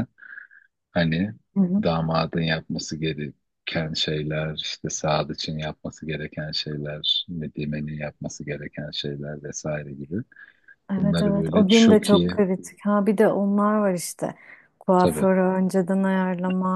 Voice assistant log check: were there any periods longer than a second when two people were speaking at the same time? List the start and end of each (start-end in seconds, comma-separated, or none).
11.0-12.4